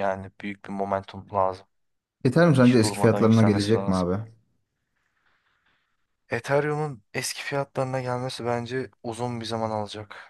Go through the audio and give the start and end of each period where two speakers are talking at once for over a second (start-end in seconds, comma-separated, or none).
2.6-4.1